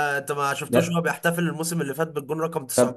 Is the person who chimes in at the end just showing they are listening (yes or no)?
no